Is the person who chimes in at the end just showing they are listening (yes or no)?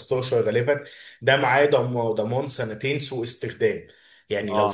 yes